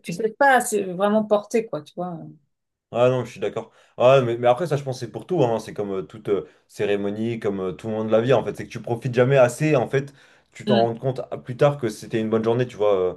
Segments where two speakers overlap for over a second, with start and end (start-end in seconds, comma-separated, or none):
none